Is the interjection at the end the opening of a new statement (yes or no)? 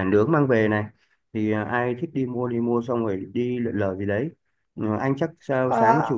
no